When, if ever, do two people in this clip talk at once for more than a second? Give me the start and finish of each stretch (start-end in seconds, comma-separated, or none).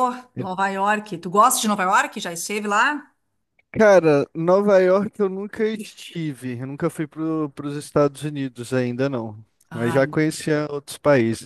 none